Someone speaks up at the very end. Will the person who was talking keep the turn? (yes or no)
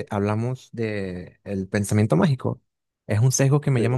yes